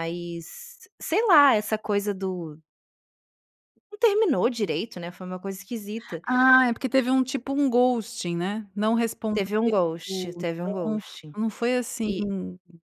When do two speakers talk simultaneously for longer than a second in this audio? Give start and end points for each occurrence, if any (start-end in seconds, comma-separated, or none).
10.1-11.3